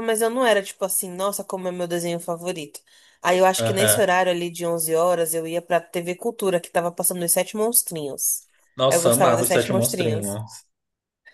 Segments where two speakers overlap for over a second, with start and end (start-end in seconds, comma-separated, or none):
8.9-10.4